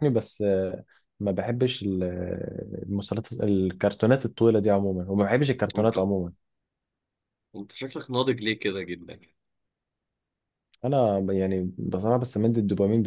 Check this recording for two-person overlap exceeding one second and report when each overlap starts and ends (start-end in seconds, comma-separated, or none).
none